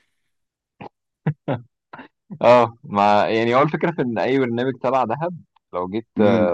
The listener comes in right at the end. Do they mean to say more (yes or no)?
no